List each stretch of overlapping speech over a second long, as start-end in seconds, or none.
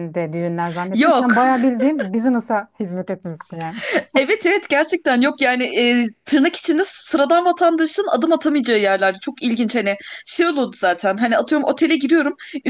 none